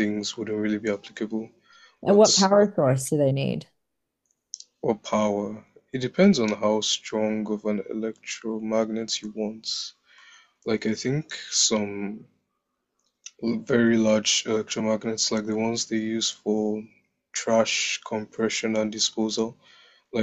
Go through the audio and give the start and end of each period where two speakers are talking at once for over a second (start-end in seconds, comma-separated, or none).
none